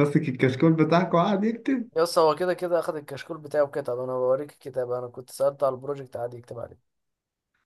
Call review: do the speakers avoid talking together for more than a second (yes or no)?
yes